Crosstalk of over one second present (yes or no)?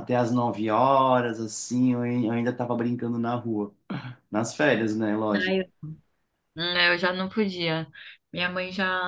no